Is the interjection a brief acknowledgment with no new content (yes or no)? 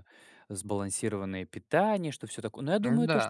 yes